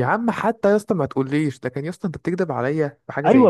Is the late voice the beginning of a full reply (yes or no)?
yes